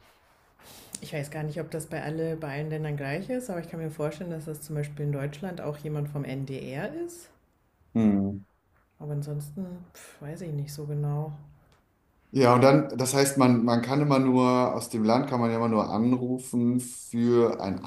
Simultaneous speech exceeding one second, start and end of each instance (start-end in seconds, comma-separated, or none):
none